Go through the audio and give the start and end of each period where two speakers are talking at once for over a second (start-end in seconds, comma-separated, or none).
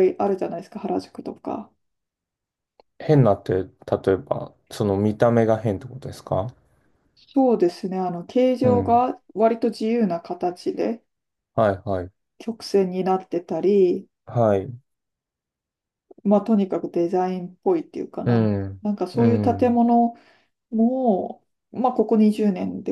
18.2-19.8